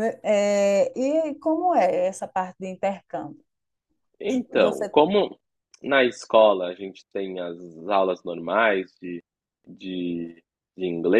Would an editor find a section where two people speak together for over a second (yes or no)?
no